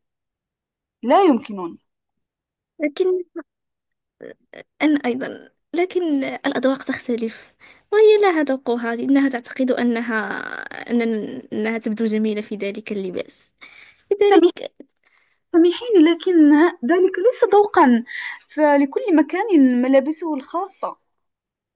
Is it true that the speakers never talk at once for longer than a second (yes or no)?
yes